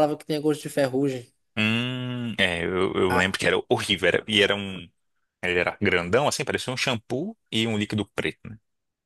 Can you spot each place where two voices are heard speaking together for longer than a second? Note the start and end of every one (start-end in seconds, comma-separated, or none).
none